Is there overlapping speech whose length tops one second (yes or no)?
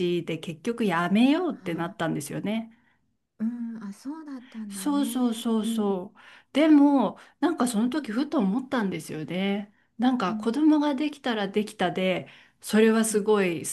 yes